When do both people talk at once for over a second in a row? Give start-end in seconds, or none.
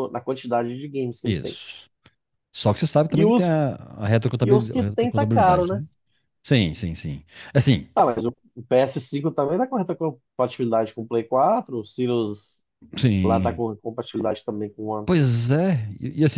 4.4-5.8